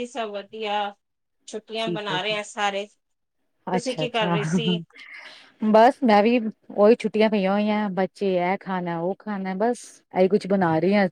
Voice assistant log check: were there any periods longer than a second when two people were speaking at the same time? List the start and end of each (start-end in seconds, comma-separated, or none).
none